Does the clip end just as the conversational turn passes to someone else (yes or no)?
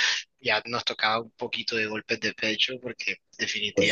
no